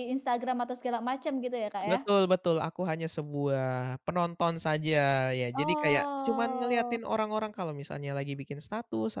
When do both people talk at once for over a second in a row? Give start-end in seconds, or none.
5.5-7.0